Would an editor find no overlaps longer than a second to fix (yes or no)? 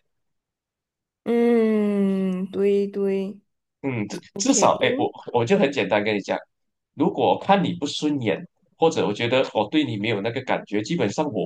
yes